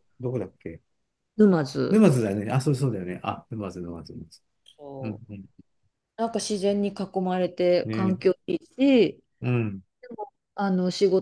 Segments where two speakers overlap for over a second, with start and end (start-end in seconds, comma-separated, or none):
none